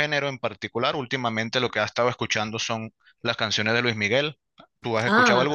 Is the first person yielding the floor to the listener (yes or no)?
yes